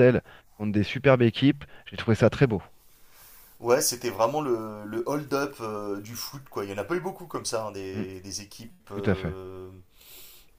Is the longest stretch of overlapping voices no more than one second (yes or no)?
yes